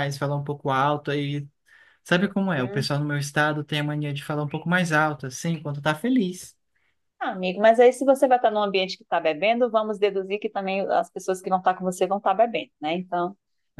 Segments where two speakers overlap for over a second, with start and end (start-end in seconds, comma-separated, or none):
none